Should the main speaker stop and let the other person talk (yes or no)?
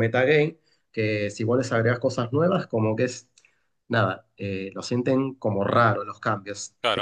yes